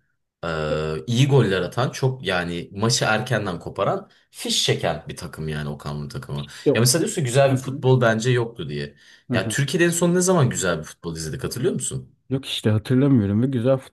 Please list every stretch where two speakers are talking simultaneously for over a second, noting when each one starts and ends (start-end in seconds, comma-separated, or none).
none